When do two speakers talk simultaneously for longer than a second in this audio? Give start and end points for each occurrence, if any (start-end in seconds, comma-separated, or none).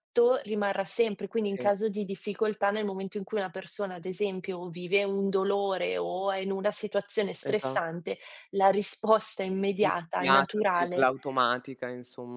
9.8-11.1